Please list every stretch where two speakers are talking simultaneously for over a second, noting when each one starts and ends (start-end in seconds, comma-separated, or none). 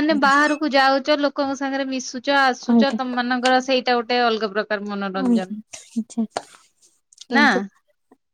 none